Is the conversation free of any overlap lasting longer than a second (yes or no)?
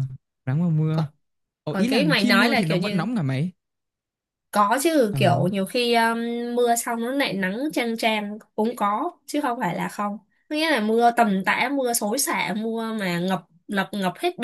no